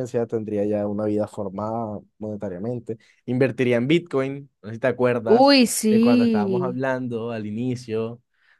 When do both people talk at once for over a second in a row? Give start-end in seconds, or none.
5.3-6.8